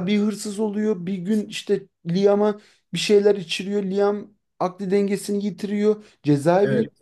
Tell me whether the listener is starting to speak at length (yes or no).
no